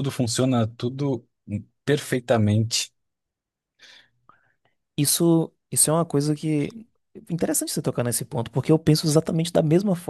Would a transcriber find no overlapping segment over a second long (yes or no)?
yes